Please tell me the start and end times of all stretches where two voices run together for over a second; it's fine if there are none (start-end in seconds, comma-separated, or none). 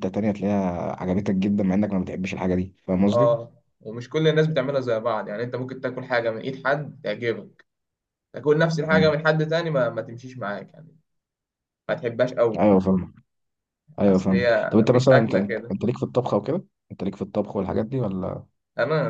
14.1-15.7